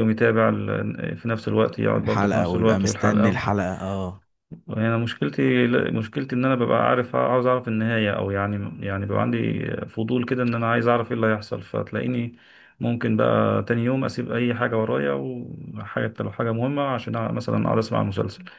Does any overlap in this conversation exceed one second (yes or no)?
yes